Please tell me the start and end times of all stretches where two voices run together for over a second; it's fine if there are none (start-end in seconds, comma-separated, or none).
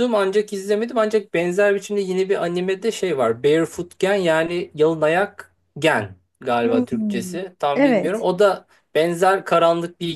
6.6-8.3